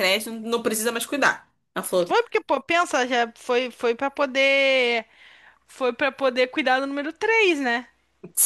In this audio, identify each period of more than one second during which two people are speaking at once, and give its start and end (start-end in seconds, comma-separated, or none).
none